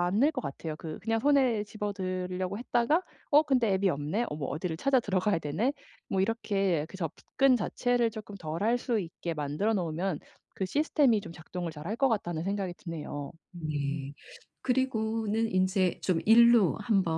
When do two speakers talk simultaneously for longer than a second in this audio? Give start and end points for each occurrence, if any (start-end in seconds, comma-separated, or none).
none